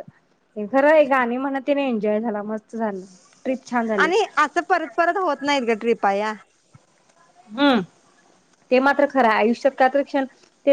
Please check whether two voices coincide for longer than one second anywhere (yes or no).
no